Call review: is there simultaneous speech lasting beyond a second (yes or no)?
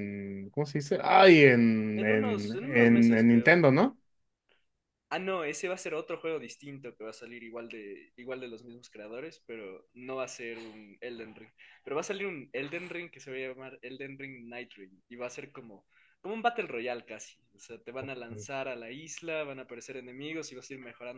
yes